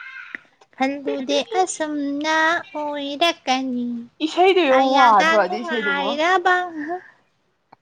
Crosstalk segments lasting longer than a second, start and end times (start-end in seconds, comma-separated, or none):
4.7-6.1